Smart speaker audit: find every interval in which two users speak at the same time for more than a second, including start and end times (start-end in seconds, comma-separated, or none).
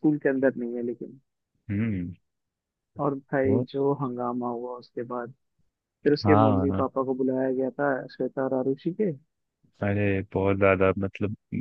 none